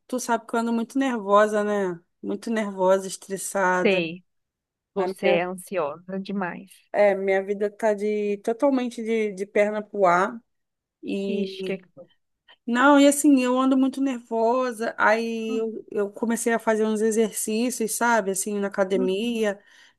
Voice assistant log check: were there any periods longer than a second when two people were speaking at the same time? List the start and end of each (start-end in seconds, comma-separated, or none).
none